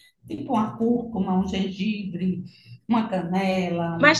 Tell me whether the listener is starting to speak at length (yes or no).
yes